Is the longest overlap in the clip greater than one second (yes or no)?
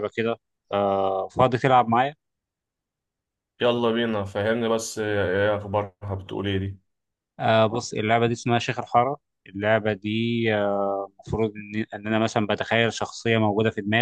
no